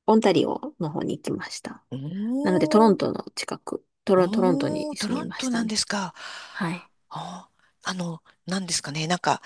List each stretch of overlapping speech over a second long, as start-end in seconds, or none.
4.1-5.8